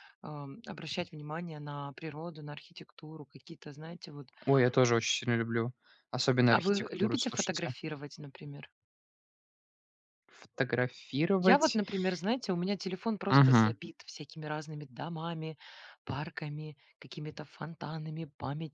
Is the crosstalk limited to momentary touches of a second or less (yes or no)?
no